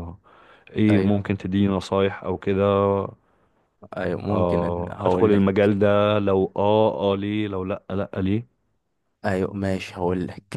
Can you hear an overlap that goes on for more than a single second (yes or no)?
yes